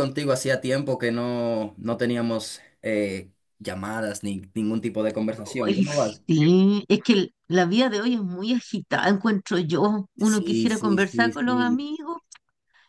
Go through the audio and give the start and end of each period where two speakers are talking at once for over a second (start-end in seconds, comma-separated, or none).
10.2-11.8